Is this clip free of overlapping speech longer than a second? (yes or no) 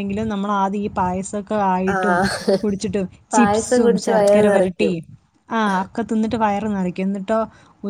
no